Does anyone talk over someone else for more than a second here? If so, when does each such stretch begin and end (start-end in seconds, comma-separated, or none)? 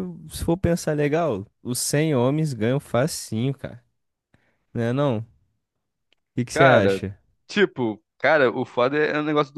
none